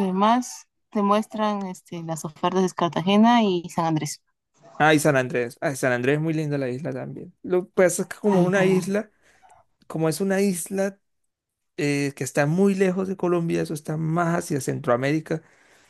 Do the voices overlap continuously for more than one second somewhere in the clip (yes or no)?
no